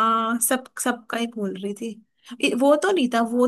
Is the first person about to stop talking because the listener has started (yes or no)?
no